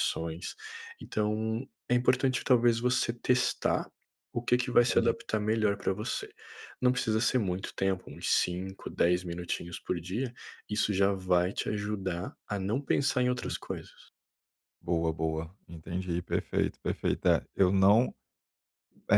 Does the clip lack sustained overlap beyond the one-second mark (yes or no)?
yes